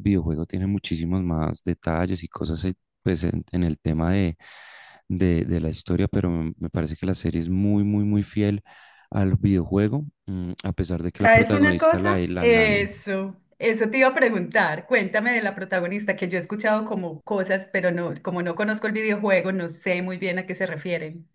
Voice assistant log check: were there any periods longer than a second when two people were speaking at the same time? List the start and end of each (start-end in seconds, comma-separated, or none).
11.2-12.7